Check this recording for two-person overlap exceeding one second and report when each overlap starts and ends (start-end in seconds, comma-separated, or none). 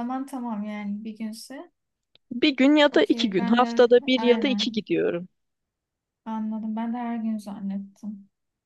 2.9-4.7